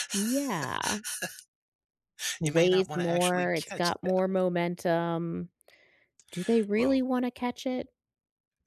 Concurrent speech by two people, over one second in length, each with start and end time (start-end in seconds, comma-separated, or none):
2.4-4.4